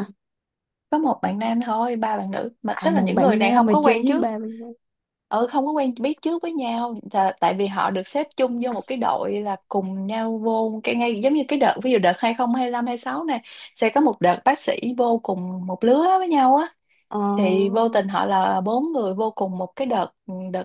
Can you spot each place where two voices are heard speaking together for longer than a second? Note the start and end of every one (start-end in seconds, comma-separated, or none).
2.7-4.3